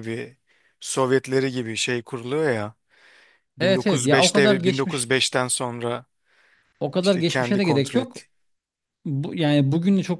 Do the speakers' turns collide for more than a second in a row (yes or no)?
yes